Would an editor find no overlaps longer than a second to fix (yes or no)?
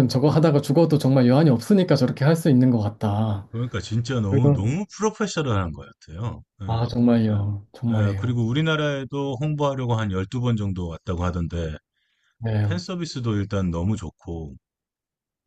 yes